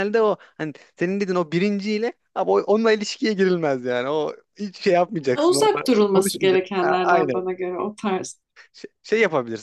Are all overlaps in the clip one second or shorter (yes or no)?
no